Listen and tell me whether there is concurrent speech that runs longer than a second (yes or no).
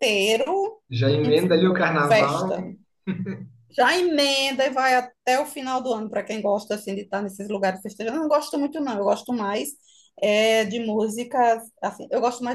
yes